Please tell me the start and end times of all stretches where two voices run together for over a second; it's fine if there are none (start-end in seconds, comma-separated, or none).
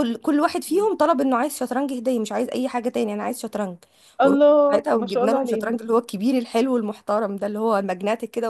4.2-5.8